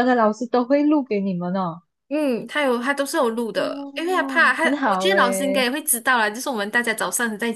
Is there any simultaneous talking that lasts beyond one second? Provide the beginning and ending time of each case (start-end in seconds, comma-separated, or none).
3.5-5.7